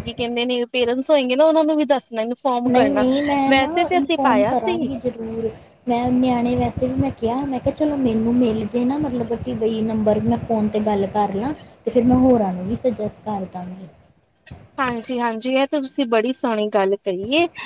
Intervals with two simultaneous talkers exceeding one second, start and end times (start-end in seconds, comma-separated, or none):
none